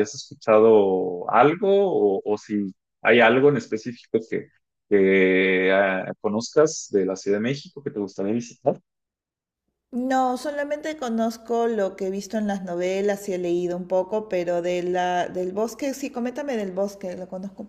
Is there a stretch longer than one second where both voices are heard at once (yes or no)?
no